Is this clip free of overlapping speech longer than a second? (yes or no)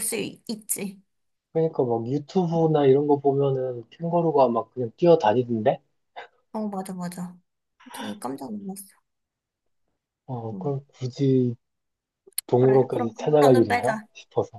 no